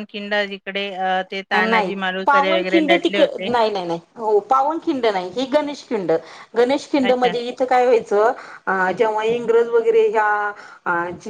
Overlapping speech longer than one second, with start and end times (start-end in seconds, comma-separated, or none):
1.7-3.5